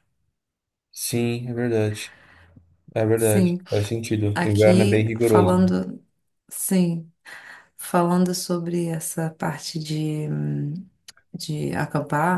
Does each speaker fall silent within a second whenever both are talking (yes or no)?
no